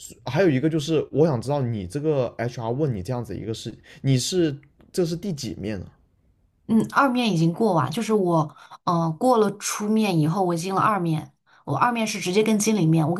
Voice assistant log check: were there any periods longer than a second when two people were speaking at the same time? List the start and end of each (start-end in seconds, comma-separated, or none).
none